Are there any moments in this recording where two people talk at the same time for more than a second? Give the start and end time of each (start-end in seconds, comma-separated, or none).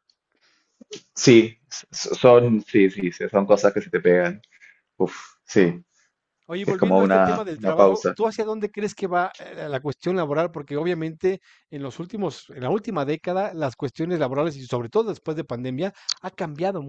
6.6-8.2